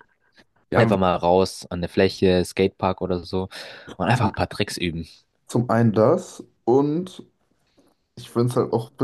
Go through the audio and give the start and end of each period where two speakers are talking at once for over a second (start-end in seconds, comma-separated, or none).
none